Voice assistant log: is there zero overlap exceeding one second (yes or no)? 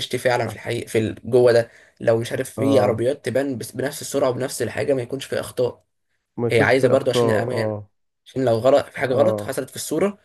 no